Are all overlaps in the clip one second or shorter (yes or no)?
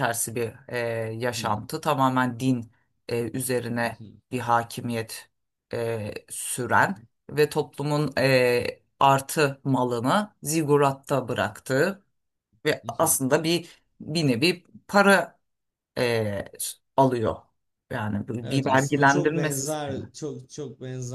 no